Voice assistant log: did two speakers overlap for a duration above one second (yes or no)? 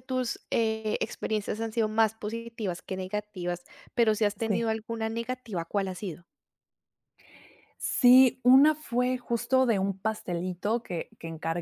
no